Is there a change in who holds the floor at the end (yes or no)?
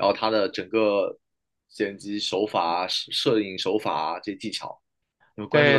yes